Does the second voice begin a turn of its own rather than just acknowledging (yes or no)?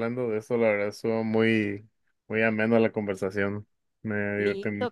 yes